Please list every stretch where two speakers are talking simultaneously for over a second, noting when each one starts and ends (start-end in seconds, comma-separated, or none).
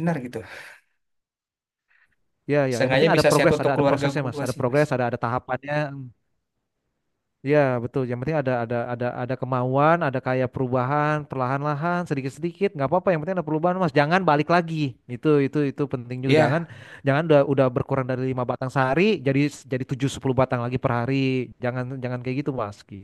2.8-4.8